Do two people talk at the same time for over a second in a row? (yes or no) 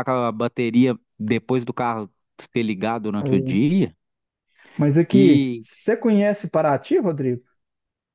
no